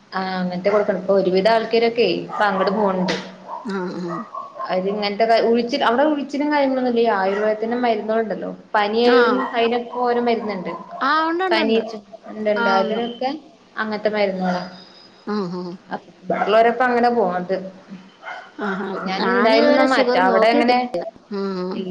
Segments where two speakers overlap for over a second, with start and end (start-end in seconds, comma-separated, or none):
19.2-20.7